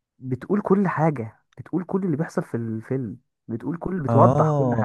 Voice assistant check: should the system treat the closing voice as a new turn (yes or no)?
yes